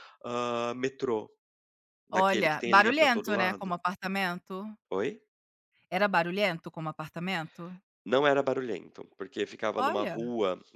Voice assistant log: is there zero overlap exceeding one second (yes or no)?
no